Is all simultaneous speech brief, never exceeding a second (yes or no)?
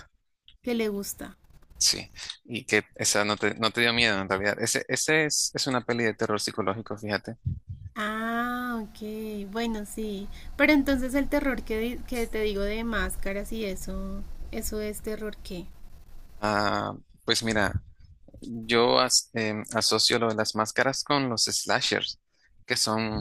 yes